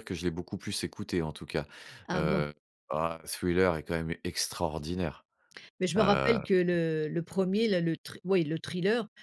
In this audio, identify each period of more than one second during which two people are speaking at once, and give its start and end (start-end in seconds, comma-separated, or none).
none